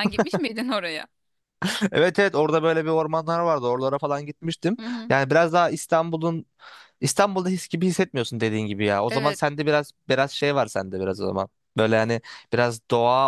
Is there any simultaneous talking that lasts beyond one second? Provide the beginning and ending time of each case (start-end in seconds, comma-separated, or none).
none